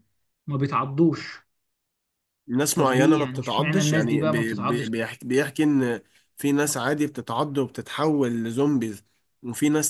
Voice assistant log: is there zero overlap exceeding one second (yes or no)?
no